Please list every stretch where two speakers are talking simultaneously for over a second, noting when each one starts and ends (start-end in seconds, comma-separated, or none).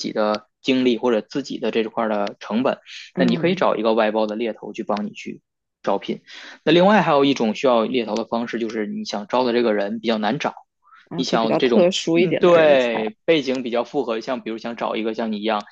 11.1-13.1